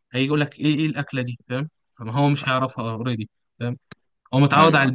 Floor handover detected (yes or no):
no